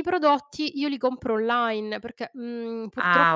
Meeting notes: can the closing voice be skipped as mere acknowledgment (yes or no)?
no